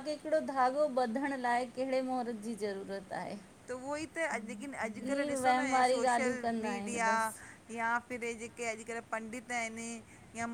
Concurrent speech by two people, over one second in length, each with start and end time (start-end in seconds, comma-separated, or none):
5.0-7.1